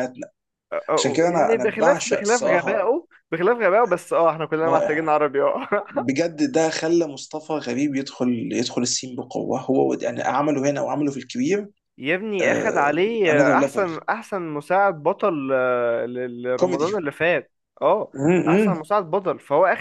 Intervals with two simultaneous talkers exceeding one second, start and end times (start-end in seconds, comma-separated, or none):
0.9-2.9